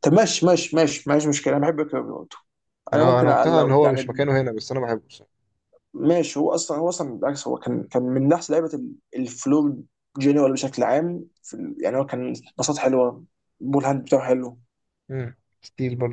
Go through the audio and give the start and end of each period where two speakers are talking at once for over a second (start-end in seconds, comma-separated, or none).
2.9-4.2